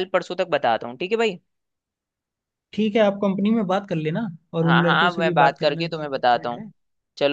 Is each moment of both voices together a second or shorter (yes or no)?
no